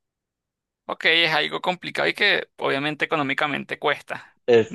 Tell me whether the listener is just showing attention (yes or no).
no